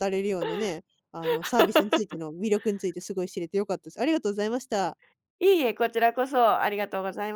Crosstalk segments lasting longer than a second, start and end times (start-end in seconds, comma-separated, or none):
none